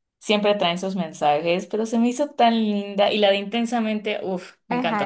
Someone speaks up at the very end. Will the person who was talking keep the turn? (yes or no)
no